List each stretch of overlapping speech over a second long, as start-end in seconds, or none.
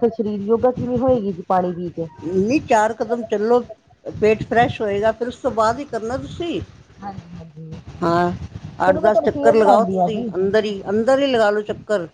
8.9-10.3